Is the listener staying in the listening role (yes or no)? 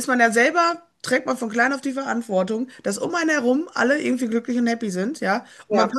yes